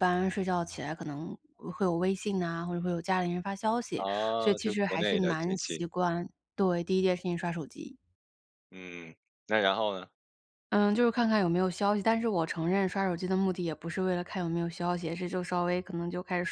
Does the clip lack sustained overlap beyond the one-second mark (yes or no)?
no